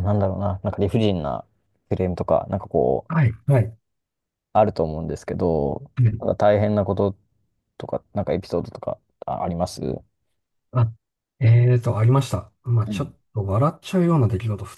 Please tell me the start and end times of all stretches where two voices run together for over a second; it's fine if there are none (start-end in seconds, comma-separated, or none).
none